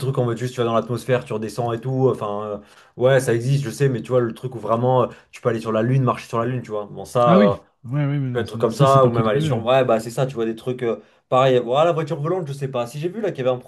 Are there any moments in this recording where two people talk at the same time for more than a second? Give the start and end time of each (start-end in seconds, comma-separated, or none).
8.3-9.6